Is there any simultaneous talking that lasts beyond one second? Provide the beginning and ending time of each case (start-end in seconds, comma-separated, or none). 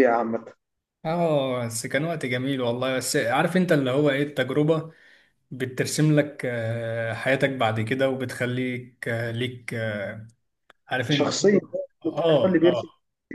11.1-12.8